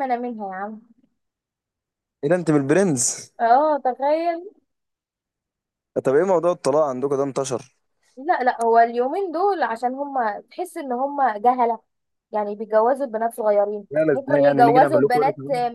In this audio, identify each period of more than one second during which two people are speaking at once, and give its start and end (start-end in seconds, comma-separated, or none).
13.9-15.2